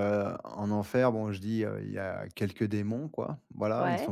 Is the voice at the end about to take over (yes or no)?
no